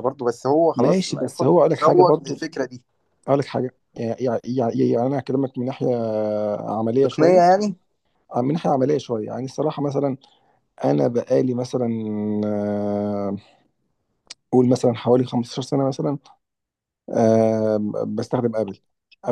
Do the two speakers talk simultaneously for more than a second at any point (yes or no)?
yes